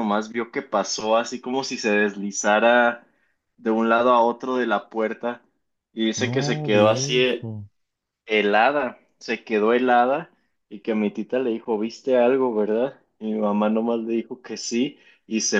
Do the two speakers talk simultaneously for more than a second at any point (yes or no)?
yes